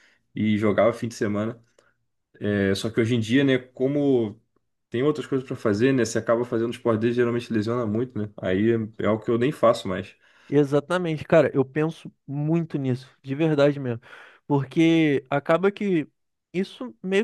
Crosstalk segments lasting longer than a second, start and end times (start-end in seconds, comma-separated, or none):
none